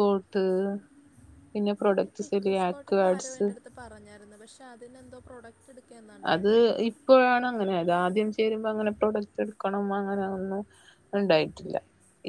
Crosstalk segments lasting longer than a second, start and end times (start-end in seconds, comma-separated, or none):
none